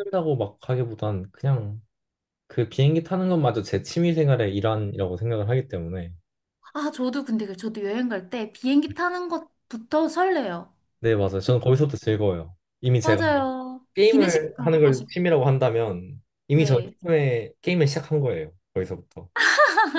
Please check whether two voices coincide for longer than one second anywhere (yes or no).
yes